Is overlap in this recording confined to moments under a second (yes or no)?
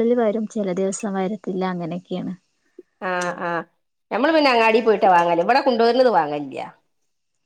yes